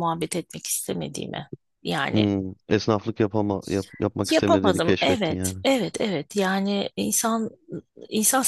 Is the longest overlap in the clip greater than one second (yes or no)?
yes